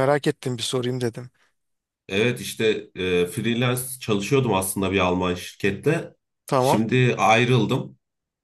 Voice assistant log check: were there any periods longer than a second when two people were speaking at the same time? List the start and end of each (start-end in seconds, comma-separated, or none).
none